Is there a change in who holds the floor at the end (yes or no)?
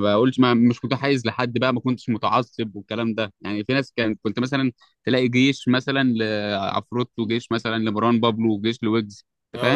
yes